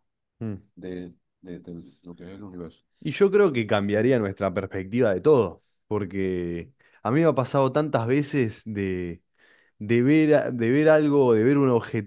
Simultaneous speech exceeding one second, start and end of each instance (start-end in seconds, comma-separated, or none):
none